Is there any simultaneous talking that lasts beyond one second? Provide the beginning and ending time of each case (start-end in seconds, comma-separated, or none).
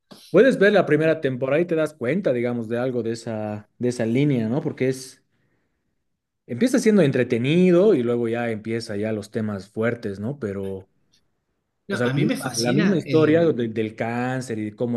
11.9-13.6